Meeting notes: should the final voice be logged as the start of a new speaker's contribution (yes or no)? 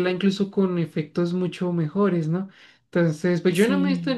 no